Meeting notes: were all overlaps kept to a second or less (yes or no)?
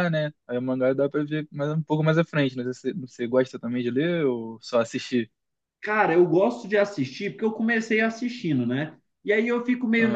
yes